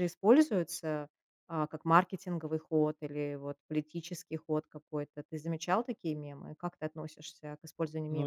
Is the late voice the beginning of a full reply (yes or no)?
yes